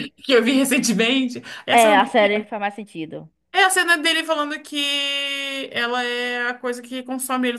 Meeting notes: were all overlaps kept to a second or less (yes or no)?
yes